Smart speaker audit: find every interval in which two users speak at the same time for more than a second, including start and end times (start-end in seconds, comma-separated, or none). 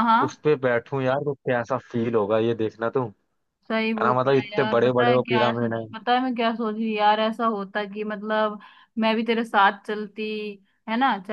4.0-5.8